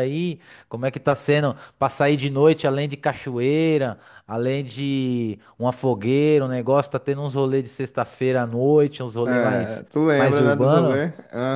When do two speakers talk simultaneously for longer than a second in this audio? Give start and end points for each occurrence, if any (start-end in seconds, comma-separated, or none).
9.2-11.0